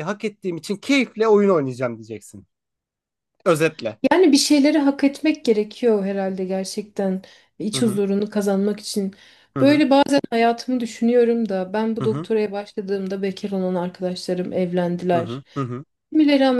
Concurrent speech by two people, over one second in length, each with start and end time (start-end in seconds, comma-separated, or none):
none